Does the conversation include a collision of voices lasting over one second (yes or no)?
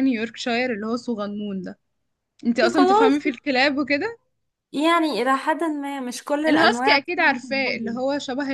yes